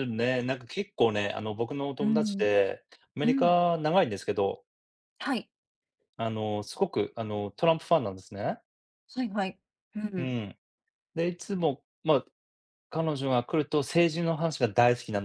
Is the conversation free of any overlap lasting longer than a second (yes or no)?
yes